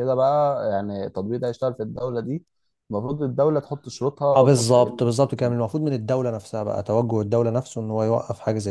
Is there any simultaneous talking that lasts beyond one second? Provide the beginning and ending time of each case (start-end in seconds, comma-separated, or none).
none